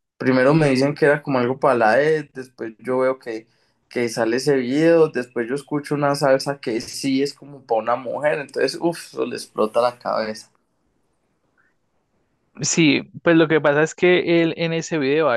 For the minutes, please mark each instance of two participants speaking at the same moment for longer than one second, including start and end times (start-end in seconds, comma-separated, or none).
none